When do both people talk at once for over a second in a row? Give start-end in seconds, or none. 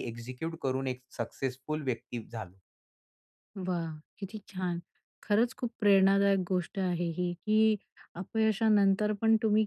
none